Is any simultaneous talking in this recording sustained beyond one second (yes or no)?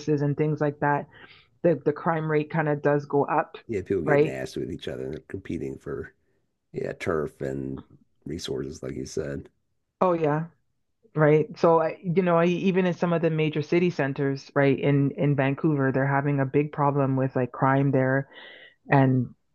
no